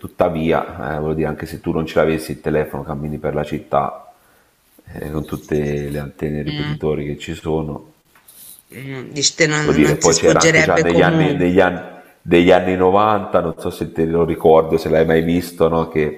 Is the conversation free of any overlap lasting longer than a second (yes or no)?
no